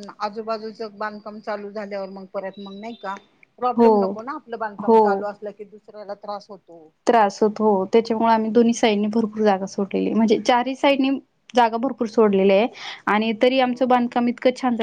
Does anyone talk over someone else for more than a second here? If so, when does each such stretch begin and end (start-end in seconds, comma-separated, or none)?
none